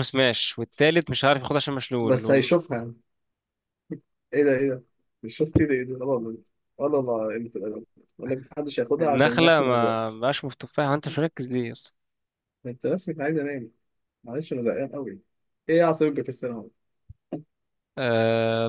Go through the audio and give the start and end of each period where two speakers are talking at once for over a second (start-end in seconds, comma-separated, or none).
9.0-10.2